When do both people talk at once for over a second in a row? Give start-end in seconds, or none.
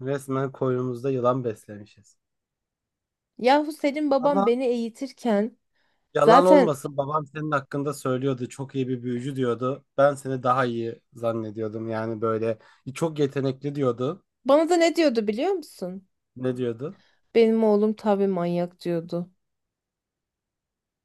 none